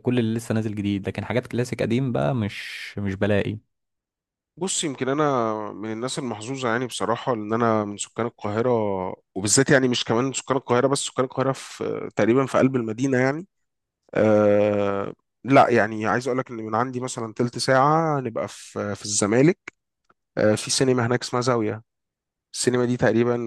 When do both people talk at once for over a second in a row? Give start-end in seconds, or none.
none